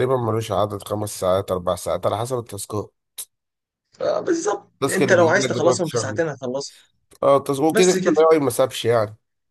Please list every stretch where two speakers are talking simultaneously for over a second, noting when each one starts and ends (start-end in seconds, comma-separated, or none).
4.7-6.2